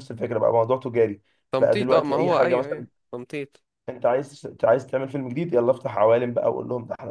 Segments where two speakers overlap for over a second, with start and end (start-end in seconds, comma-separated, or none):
1.6-2.9